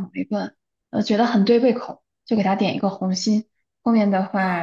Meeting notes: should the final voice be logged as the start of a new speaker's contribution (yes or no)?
no